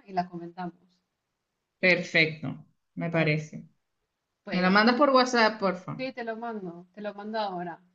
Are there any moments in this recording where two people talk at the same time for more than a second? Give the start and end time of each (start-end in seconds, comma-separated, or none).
none